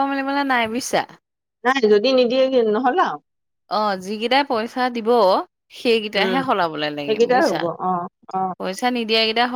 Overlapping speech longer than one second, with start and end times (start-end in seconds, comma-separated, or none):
none